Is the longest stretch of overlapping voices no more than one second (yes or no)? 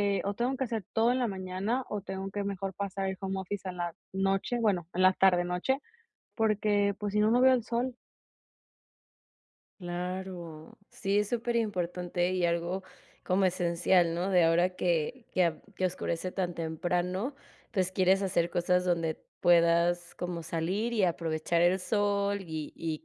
yes